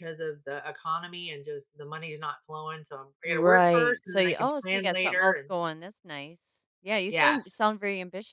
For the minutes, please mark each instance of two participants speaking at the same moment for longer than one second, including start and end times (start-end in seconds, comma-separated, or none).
3.2-5.5